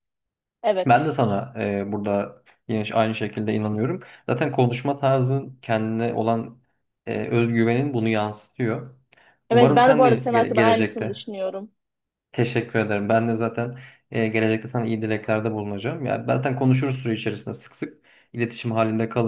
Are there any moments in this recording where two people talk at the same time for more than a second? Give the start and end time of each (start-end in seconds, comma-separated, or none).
9.5-11.2